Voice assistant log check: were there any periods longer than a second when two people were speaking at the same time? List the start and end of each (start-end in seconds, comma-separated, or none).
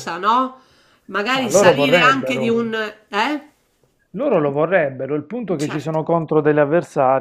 1.3-2.7